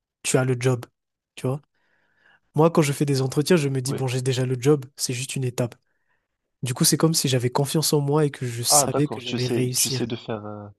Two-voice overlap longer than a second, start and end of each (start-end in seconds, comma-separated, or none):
8.7-10.1